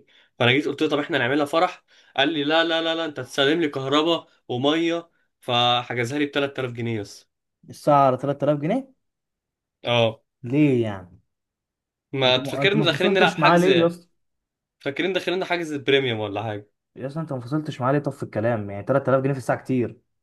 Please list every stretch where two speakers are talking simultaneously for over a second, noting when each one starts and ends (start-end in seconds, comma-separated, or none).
12.3-13.9